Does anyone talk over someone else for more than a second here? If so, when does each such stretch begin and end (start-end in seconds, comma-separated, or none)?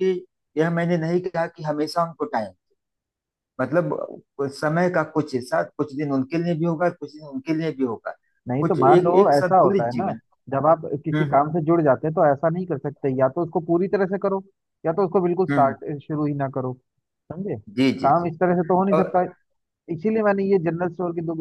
8.6-10.1